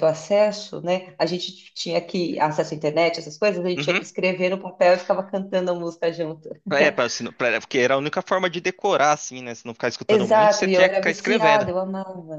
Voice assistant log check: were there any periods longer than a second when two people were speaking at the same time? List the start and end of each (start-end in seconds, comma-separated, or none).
10.1-11.7